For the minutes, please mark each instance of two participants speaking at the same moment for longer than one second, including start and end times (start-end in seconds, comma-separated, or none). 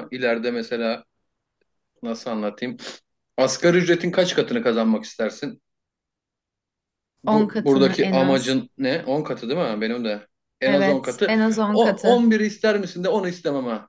7.3-8.6, 10.7-12.2